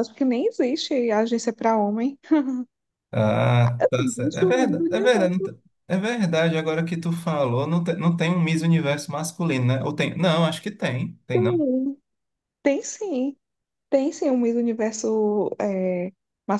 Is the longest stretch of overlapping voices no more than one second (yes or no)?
no